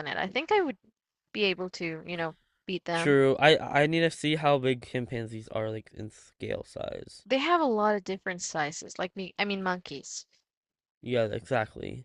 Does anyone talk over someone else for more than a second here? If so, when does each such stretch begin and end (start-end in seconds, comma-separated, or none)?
none